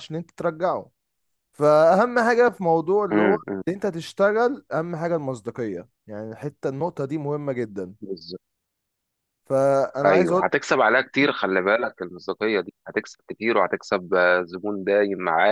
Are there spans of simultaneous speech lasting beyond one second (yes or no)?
no